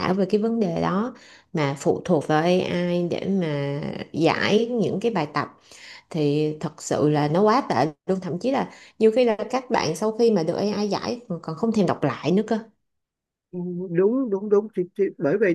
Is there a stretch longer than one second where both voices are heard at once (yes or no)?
no